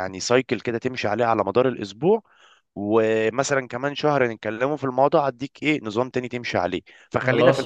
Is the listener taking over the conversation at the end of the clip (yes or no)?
no